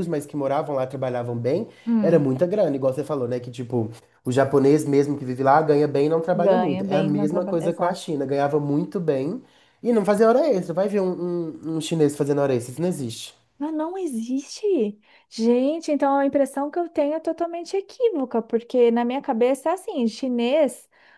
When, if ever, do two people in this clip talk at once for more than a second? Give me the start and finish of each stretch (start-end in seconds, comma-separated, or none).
6.3-8.1